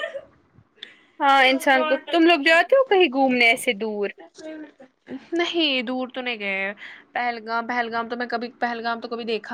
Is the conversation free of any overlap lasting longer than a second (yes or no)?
yes